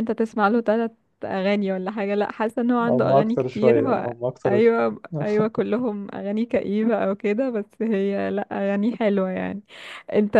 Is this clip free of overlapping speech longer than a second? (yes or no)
no